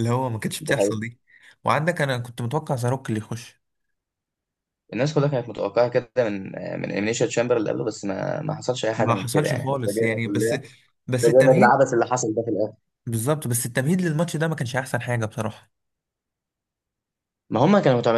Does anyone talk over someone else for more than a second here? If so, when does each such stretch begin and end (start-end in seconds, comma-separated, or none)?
8.9-10.6